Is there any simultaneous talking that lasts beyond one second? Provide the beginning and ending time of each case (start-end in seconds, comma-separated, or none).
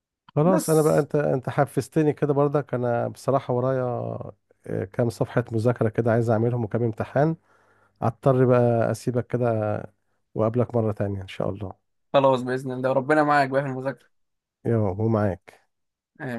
none